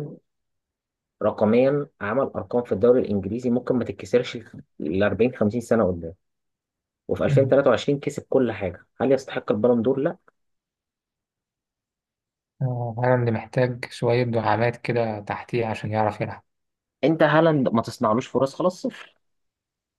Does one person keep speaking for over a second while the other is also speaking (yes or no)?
no